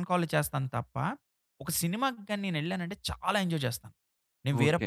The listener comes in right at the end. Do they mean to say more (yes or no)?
yes